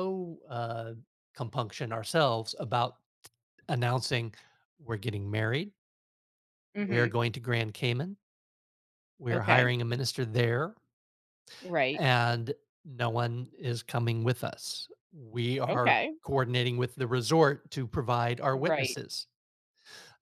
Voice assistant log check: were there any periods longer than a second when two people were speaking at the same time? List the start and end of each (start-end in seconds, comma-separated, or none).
none